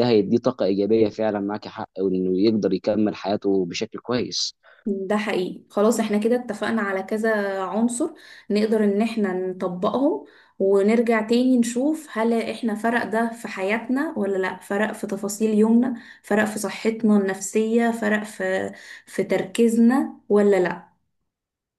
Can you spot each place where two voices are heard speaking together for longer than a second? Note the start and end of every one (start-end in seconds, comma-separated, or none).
none